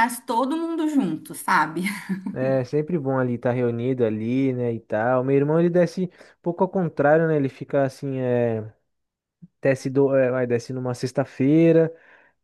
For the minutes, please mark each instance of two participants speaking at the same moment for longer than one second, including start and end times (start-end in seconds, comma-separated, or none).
none